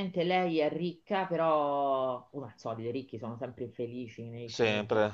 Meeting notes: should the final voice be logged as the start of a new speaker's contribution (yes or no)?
no